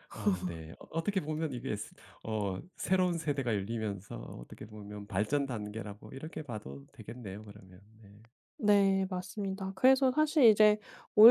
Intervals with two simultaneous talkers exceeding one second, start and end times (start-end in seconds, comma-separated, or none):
none